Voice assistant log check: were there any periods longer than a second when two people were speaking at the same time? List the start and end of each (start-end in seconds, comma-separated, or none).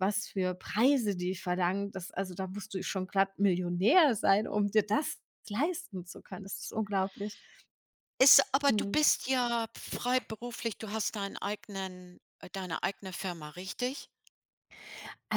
none